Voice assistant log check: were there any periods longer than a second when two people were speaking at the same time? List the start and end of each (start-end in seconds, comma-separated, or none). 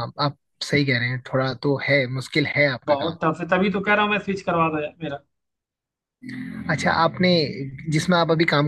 none